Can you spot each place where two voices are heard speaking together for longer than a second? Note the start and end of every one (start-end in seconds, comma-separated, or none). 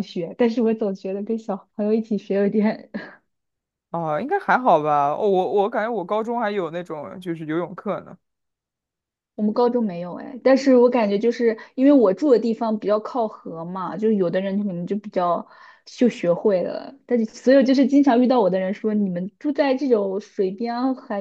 none